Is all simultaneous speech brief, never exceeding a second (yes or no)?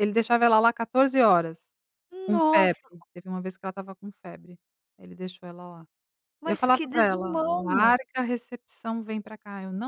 no